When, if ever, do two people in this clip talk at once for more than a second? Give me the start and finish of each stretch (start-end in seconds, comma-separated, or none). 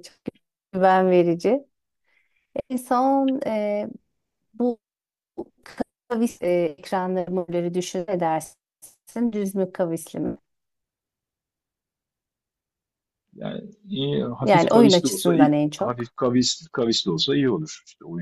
14.4-16.1